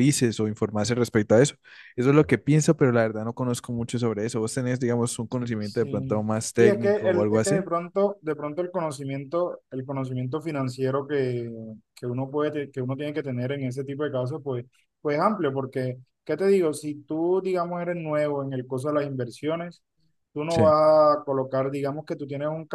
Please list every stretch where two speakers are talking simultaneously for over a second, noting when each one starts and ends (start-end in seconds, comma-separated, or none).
5.6-7.6